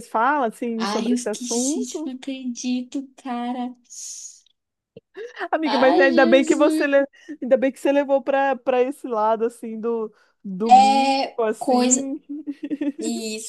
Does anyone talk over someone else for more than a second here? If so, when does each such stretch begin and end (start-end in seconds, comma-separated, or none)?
0.8-2.1, 5.7-6.9, 10.7-12.0